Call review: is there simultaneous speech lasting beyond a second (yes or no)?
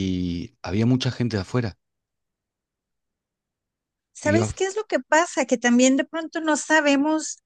no